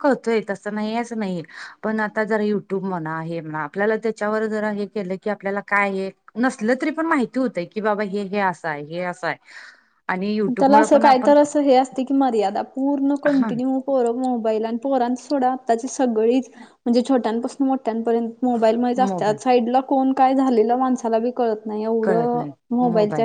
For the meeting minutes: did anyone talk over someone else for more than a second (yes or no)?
no